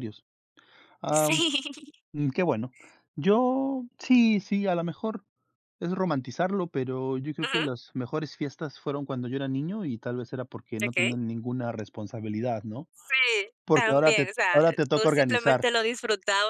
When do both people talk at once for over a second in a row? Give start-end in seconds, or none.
13.6-15.6